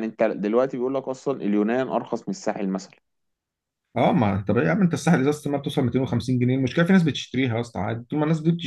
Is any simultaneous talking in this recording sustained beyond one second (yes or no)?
no